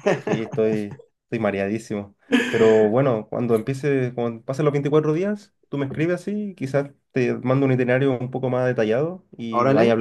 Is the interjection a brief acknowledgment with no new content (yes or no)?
no